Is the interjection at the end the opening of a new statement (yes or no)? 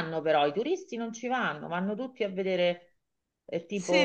yes